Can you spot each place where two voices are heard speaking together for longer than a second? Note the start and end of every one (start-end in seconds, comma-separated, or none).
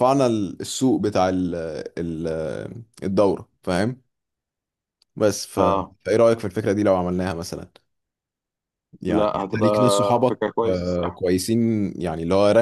9.1-11.2